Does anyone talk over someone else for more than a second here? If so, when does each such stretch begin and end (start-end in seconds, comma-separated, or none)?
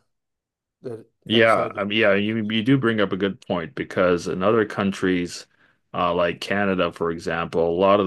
1.3-2.5